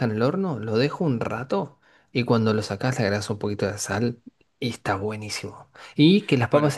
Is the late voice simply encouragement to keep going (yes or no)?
yes